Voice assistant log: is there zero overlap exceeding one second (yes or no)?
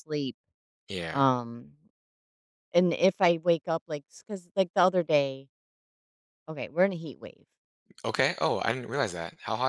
yes